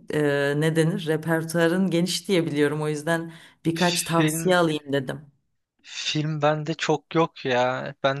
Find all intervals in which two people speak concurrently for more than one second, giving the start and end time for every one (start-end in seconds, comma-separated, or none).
none